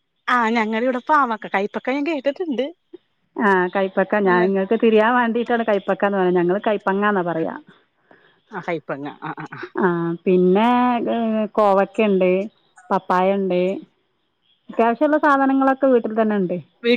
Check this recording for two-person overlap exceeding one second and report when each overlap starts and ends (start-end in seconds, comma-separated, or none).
none